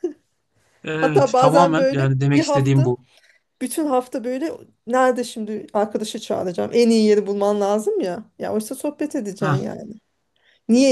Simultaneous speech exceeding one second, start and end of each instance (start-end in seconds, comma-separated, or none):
1.0-2.9